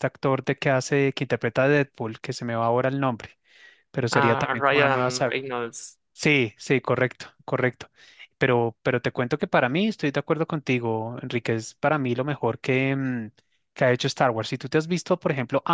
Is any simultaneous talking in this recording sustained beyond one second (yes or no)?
yes